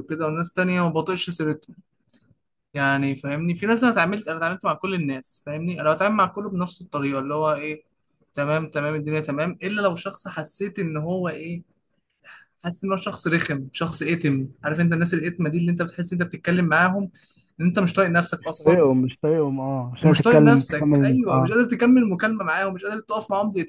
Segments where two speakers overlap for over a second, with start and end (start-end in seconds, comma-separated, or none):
20.0-21.5